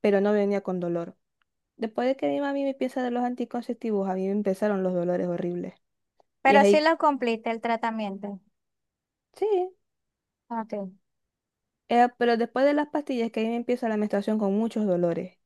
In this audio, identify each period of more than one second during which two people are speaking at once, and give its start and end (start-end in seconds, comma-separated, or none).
none